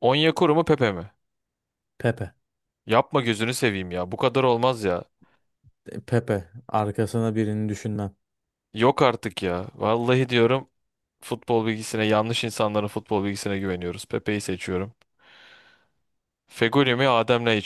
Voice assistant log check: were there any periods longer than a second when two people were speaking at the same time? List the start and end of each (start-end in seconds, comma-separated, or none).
none